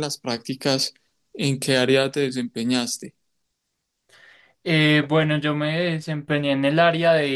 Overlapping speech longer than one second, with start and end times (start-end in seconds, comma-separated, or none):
none